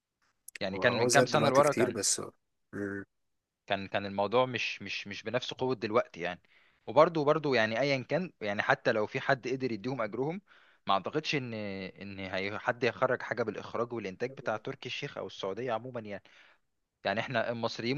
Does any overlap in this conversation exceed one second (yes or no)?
yes